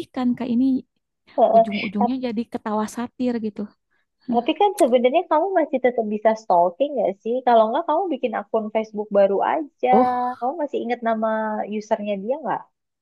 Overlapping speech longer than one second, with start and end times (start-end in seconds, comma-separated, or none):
none